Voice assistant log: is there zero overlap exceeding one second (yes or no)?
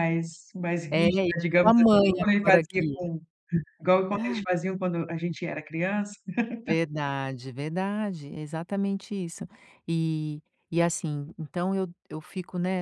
no